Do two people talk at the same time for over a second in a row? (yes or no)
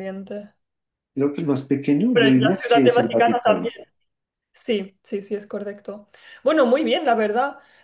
yes